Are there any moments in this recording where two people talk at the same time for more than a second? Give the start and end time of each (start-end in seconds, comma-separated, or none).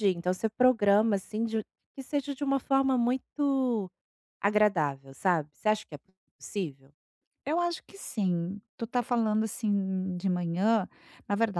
none